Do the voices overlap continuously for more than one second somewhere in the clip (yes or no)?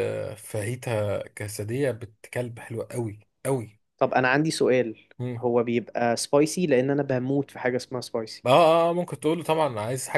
no